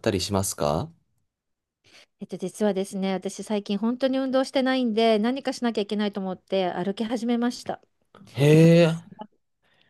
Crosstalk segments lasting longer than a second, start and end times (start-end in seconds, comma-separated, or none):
none